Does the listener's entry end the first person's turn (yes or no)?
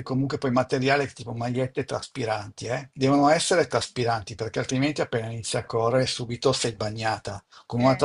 no